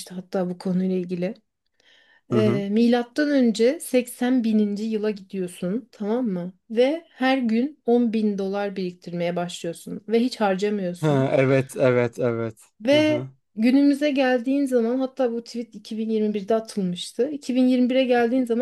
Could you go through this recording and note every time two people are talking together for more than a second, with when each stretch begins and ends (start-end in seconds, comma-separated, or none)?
none